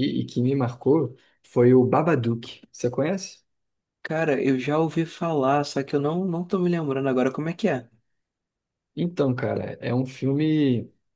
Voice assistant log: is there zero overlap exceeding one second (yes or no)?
yes